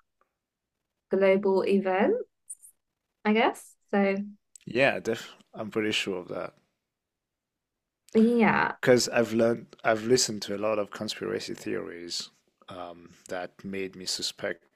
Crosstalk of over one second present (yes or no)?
no